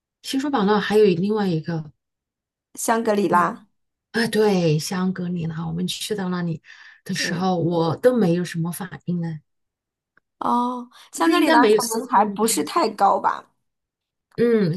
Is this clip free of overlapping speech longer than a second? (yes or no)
no